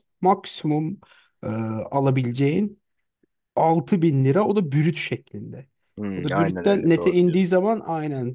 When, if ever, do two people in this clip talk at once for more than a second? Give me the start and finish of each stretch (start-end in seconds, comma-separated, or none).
6.2-7.5